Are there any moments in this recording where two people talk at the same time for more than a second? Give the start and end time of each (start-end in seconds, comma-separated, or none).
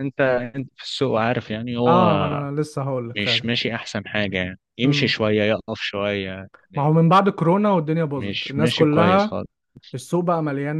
8.2-9.4